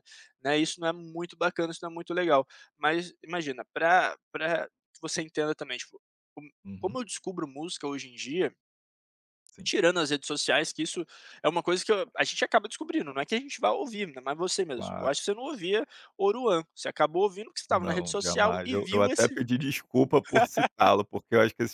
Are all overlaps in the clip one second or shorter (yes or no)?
no